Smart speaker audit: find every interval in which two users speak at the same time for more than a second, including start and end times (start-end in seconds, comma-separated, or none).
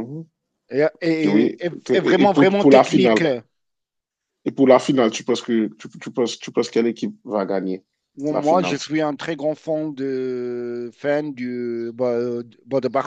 1.3-3.2